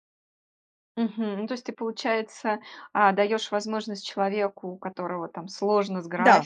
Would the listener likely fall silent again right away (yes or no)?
yes